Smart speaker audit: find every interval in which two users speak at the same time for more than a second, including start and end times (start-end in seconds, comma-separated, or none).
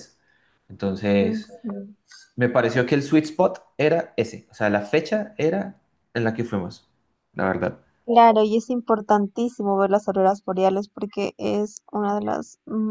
none